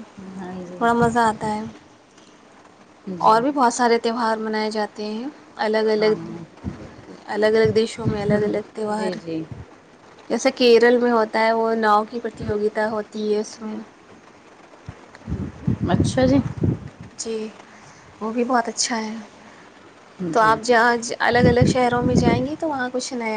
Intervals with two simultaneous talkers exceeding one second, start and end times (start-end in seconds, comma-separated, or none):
none